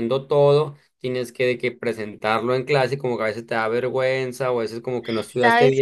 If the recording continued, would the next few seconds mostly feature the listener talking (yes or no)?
yes